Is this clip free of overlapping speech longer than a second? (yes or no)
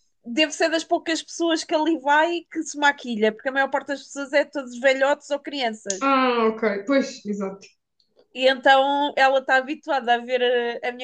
yes